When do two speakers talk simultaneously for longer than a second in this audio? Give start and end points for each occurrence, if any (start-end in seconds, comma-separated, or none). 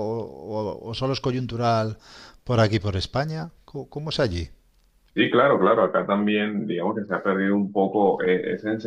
none